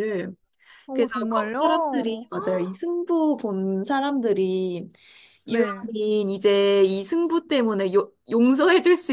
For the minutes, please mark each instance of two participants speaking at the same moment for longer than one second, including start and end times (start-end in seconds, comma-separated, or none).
0.9-2.2